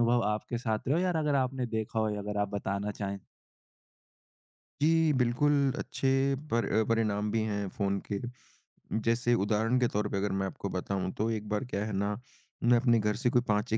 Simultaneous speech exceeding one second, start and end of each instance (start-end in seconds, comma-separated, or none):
none